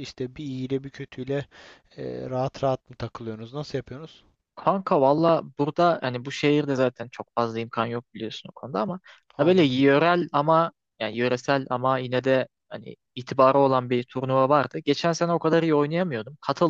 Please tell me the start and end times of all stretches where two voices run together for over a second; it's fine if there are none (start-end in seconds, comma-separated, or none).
none